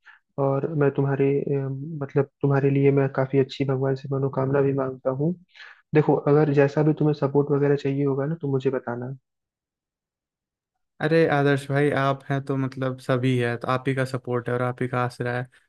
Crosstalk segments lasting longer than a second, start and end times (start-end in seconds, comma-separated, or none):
none